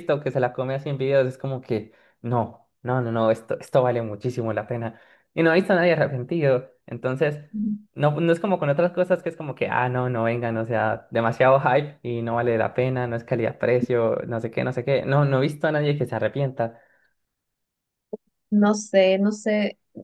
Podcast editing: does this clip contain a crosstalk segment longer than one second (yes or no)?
no